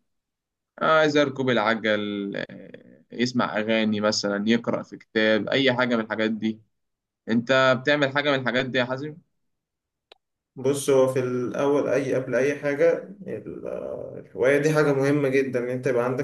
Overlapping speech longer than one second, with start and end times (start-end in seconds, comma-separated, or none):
none